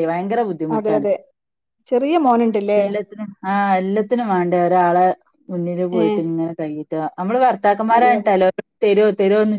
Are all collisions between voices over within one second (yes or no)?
yes